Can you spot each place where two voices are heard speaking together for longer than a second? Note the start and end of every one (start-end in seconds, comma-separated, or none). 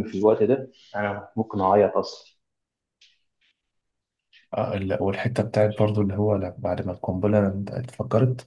none